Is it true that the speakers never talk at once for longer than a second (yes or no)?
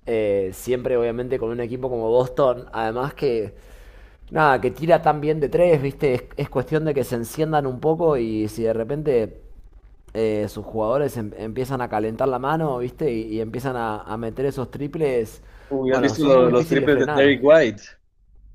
no